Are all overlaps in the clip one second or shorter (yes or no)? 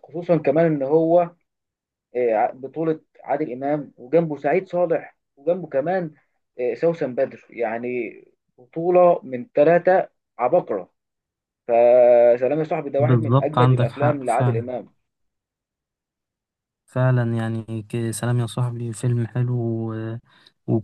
no